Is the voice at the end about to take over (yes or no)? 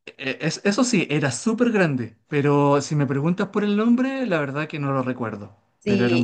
yes